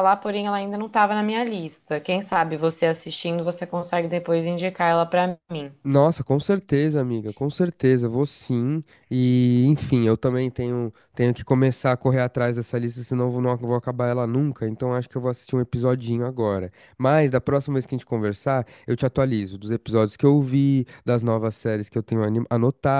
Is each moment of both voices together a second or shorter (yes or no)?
yes